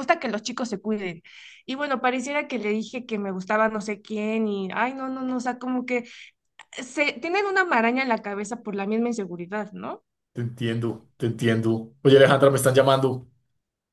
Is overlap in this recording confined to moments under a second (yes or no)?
yes